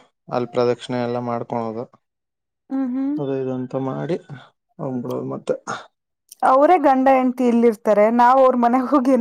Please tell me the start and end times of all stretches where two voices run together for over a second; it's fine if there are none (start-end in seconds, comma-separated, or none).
none